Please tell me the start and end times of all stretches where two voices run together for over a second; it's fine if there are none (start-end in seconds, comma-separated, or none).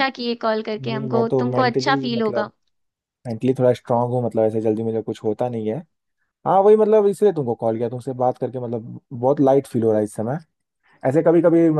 0.8-2.5